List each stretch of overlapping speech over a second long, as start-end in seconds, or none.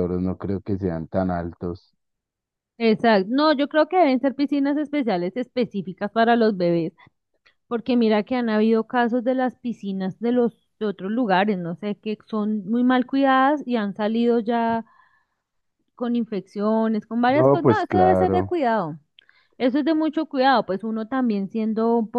17.3-18.5